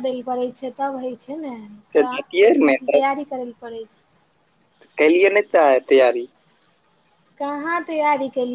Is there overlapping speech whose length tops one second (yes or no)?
no